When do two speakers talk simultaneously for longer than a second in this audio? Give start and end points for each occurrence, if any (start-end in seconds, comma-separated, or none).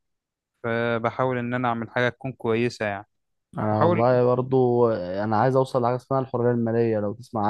none